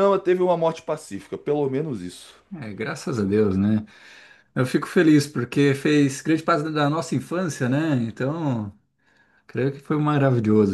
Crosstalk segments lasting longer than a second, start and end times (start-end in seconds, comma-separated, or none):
none